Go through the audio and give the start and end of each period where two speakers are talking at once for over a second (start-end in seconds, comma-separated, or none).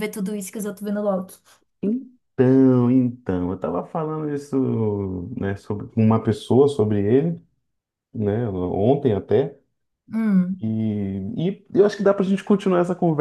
none